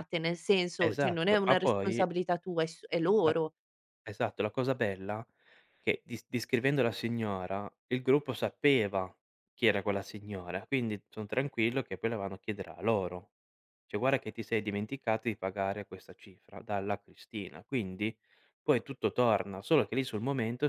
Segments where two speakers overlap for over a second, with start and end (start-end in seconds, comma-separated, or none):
0.8-2.0